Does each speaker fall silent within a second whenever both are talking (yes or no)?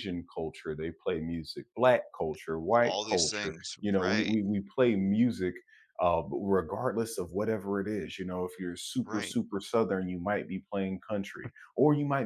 no